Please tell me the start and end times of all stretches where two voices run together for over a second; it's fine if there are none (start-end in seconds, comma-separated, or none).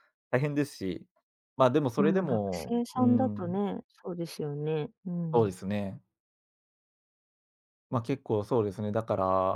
1.9-3.6